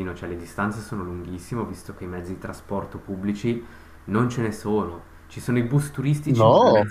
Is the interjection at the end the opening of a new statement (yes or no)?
no